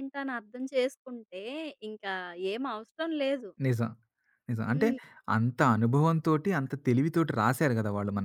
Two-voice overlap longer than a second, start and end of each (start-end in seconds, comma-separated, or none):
none